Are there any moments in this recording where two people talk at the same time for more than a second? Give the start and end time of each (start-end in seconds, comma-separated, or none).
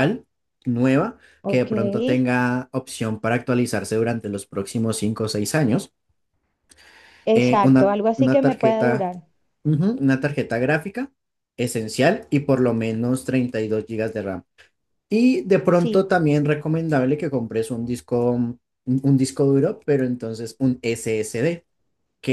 7.3-9.1